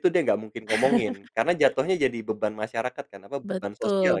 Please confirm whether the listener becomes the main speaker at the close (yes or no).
yes